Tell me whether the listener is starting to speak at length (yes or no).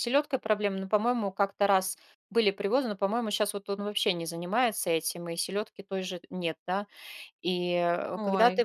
no